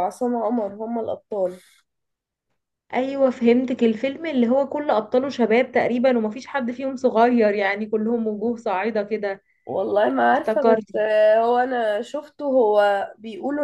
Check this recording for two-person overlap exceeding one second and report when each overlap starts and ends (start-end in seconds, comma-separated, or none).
none